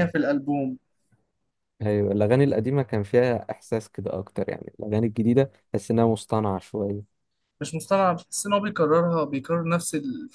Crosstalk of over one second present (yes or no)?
no